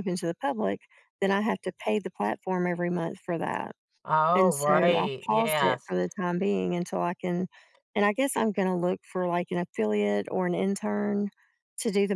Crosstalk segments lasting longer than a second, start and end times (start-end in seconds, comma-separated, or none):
4.3-5.9